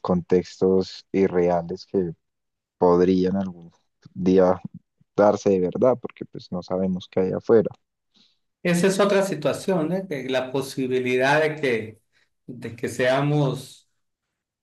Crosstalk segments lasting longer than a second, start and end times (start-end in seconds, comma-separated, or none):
none